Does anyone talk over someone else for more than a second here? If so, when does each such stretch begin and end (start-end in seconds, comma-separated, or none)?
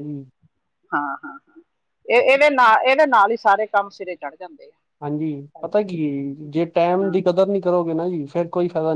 none